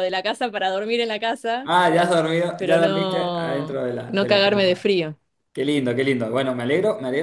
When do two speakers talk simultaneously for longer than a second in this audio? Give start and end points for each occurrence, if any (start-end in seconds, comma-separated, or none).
2.6-4.9